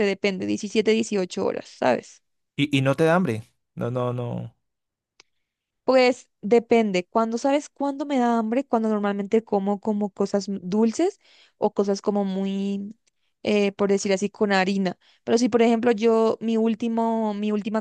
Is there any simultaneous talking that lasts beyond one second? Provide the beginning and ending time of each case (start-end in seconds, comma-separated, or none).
none